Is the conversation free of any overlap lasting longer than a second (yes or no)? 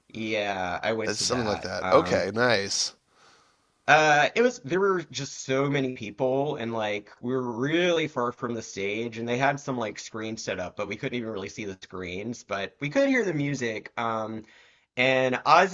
no